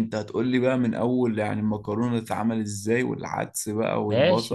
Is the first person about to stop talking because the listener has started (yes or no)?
yes